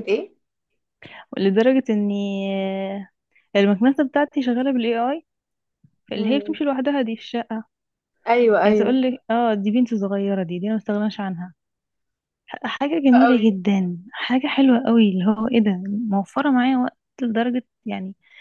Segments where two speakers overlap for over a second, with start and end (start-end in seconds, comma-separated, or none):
none